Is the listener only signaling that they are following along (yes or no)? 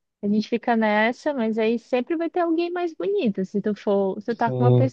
yes